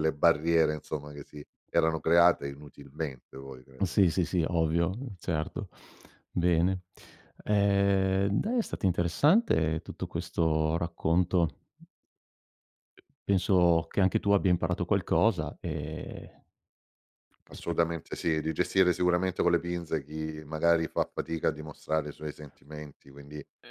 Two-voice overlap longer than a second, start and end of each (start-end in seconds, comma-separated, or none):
none